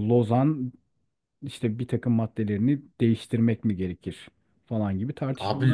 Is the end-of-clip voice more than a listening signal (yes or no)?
yes